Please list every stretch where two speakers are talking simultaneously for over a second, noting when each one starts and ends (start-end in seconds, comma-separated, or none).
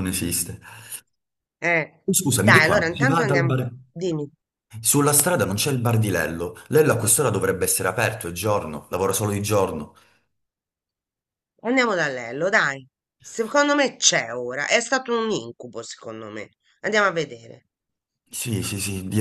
2.0-3.5